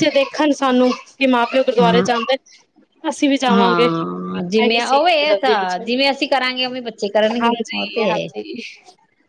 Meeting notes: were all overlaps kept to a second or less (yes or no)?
no